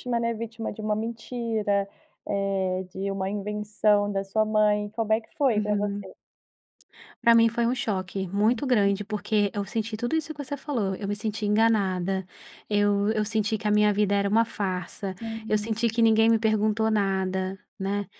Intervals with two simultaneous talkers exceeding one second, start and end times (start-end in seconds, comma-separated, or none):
none